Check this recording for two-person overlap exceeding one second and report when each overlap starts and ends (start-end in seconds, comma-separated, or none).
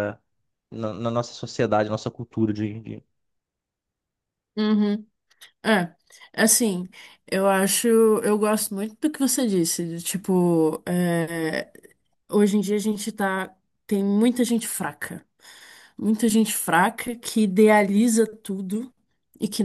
none